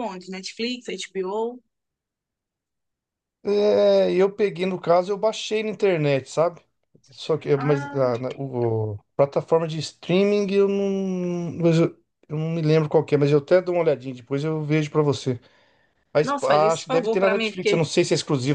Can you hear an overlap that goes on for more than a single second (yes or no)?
yes